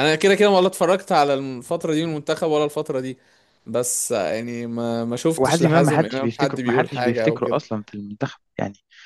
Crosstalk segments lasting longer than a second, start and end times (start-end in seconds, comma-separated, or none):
5.4-7.6